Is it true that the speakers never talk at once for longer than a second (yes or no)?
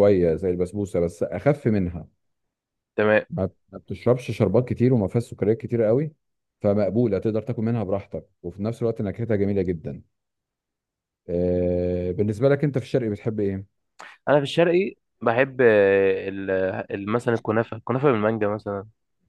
yes